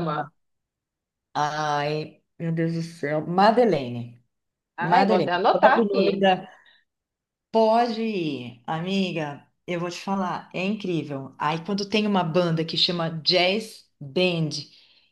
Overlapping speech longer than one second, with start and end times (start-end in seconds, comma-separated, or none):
4.8-6.2